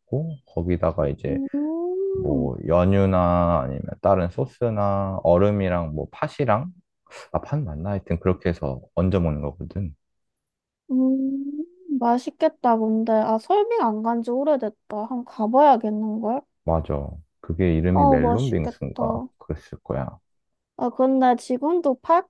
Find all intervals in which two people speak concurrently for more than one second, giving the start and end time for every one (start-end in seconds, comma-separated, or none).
17.9-19.3